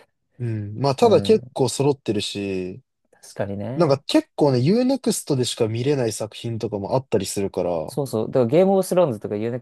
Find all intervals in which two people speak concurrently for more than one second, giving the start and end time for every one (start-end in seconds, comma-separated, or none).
none